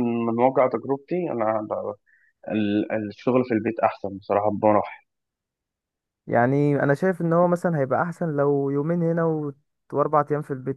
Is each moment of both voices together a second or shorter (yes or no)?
yes